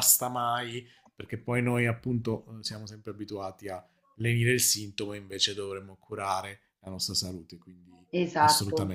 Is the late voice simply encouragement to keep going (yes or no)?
no